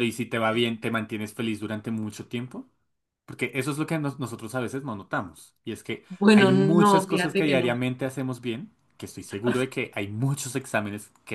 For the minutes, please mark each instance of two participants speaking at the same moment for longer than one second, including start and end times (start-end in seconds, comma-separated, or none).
6.1-7.7